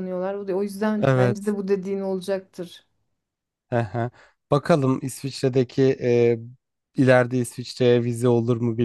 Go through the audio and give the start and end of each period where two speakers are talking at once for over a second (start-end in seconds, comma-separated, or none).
none